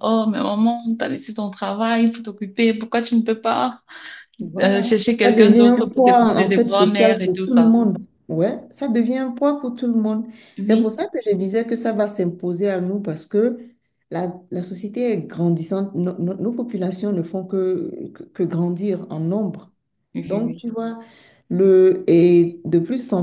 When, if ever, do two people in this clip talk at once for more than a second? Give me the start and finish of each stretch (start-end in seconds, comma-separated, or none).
4.6-7.8